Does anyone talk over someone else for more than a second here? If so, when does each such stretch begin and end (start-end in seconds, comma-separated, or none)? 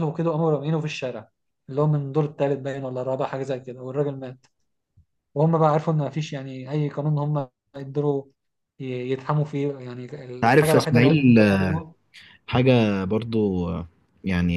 10.5-11.7